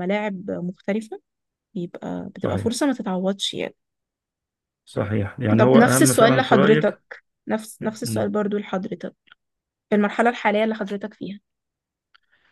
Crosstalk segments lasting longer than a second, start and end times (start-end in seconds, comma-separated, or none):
5.6-7.0